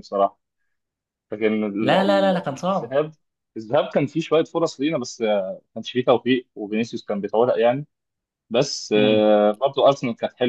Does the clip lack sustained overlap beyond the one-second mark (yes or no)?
no